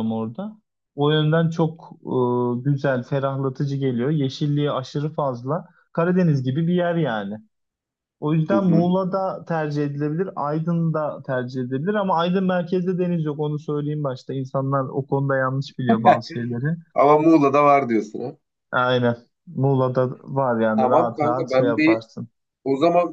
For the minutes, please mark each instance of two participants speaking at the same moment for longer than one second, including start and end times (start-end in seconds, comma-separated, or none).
20.8-22.0